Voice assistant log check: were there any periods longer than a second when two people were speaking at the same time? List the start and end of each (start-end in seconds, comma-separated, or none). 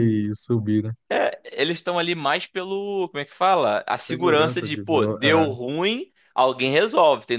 4.1-5.6